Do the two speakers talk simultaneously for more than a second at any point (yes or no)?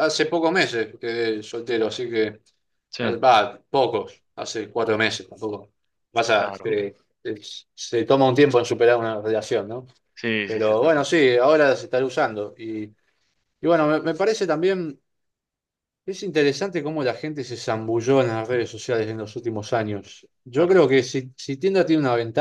no